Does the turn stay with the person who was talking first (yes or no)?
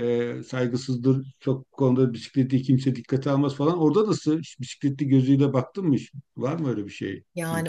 no